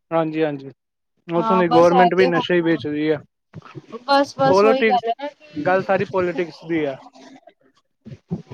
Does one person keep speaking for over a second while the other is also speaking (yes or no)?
yes